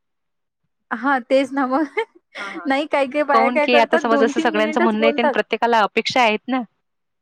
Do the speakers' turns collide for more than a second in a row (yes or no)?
yes